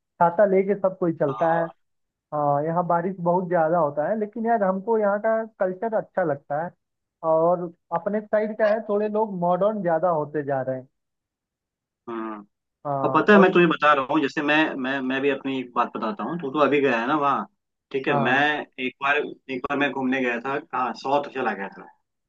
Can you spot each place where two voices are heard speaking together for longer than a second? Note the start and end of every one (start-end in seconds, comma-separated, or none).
none